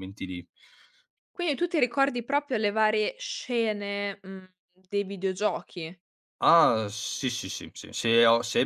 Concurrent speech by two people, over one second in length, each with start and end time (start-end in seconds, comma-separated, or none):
none